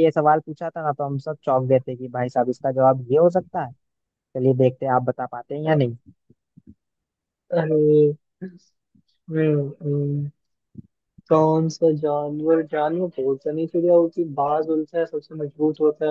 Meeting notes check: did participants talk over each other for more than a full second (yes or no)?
no